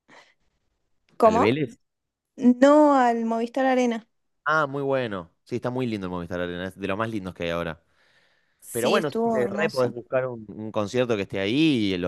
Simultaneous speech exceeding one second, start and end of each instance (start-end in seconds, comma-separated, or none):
8.7-10.0